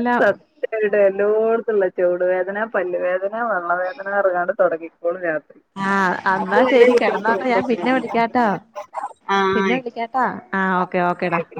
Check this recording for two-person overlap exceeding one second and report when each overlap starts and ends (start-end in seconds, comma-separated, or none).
6.4-8.2